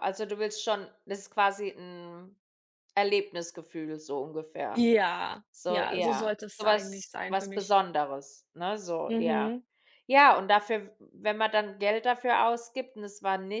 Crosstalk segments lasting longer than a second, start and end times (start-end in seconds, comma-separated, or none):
5.5-7.7